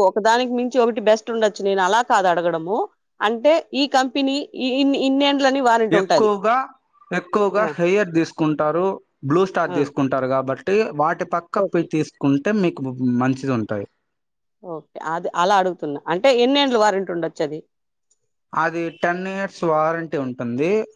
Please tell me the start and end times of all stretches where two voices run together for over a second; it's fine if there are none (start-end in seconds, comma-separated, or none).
none